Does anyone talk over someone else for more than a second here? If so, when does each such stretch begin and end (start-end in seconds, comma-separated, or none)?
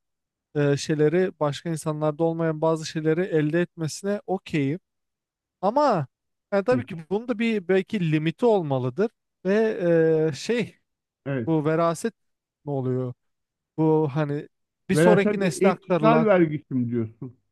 14.9-16.3